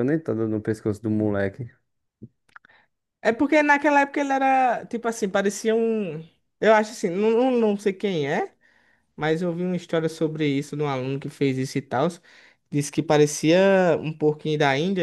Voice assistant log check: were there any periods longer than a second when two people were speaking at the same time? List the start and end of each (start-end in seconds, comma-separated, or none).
none